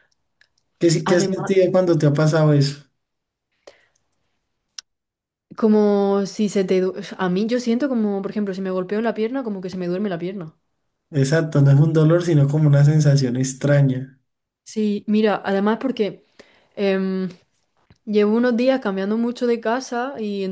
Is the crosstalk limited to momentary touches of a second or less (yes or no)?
yes